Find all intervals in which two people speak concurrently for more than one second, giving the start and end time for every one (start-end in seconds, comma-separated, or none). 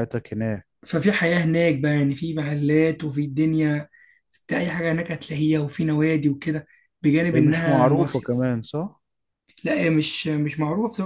7.3-8.5